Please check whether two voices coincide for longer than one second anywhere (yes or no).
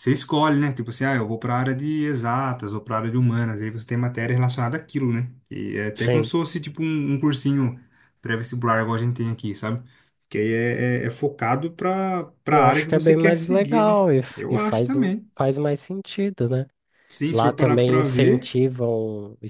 yes